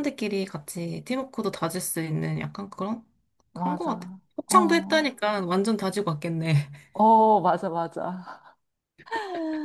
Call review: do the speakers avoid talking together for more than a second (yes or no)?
no